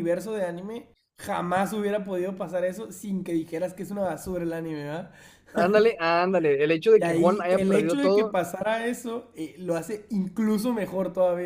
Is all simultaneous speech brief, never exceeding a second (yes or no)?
no